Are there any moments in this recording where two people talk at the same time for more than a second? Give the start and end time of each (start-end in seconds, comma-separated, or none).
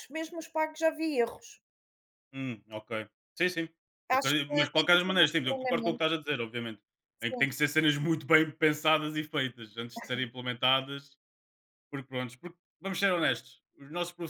4.1-6.0